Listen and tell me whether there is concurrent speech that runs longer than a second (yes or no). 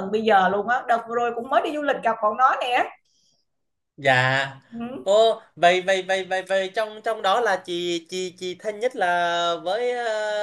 no